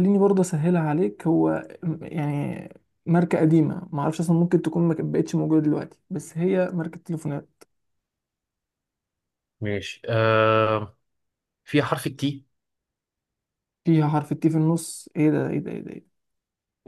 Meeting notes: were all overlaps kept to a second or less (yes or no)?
yes